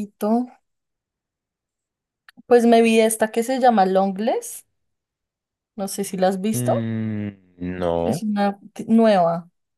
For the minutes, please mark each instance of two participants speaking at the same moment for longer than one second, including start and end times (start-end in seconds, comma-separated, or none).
none